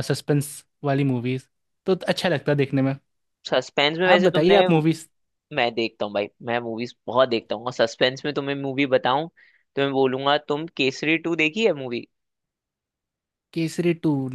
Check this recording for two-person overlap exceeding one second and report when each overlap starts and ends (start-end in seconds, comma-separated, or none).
none